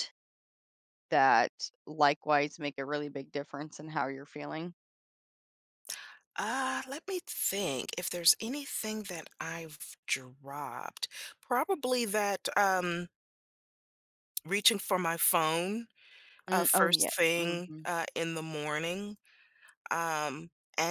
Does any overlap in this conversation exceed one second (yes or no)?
yes